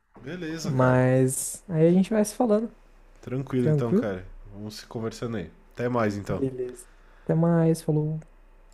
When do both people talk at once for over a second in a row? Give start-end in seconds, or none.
none